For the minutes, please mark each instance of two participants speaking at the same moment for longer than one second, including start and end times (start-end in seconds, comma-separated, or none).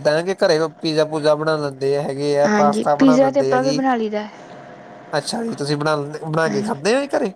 2.5-3.8